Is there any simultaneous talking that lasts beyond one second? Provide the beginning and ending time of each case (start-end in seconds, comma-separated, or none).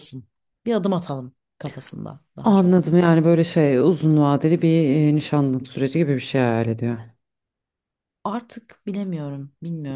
none